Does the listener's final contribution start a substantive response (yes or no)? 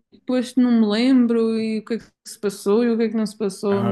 yes